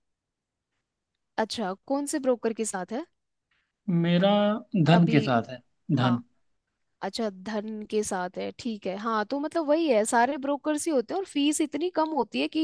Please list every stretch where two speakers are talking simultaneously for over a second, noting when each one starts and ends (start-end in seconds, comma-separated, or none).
none